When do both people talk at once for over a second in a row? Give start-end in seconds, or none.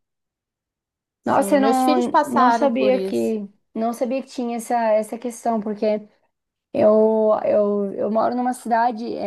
1.2-3.3